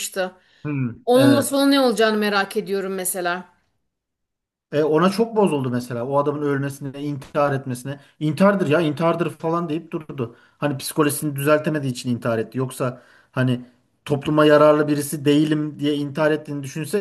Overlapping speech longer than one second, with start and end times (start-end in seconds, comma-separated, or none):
none